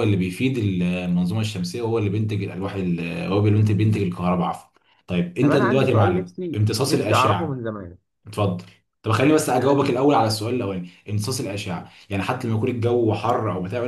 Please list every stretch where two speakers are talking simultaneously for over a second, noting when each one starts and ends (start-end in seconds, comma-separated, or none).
5.4-7.7